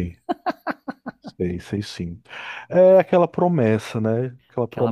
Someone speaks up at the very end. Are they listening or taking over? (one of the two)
listening